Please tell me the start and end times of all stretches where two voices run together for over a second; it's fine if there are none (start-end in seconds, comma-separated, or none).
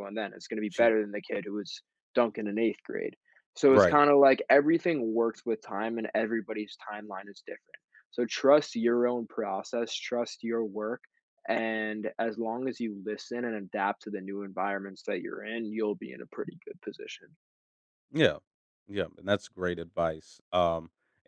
none